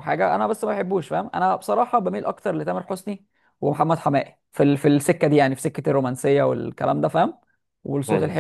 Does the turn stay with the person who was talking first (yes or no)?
yes